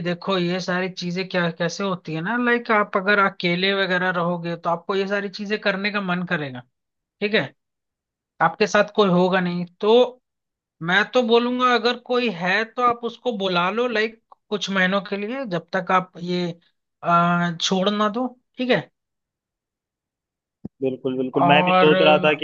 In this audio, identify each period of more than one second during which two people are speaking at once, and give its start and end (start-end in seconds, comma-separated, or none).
none